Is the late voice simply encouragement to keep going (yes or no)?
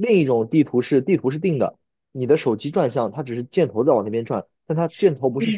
no